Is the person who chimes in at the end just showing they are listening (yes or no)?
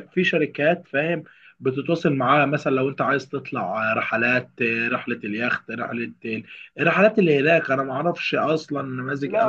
no